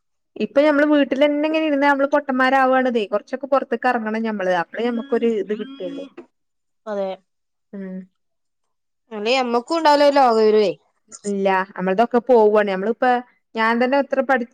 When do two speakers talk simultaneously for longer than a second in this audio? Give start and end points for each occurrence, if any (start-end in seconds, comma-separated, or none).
none